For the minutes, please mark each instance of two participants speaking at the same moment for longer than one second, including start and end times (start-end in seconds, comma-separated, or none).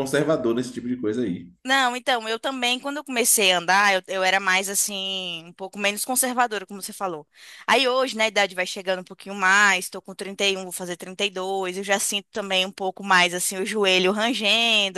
none